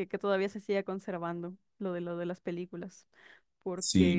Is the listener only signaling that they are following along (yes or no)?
no